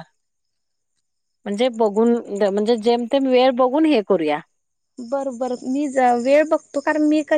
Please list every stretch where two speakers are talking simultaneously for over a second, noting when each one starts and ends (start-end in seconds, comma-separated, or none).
none